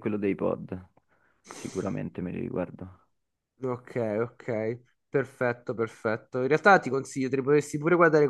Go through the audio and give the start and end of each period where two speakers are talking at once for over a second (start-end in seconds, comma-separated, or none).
none